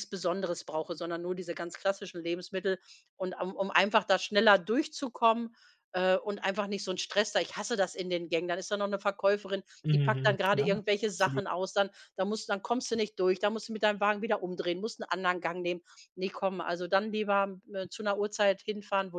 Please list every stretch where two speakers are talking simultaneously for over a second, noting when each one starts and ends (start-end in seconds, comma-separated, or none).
9.8-11.4